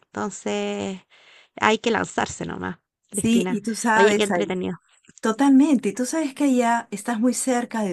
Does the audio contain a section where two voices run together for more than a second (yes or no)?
yes